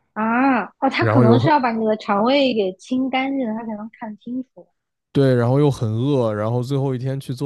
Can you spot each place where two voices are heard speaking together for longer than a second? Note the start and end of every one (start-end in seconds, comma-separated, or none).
none